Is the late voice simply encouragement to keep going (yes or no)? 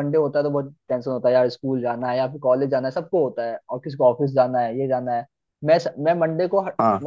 yes